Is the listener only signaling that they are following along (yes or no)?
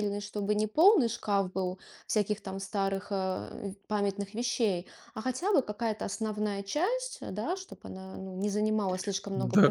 no